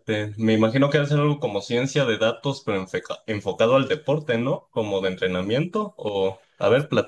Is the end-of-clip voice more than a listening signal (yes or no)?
yes